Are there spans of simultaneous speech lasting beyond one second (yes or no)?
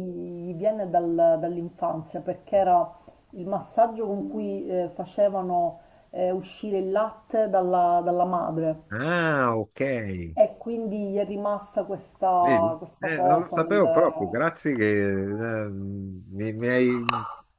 yes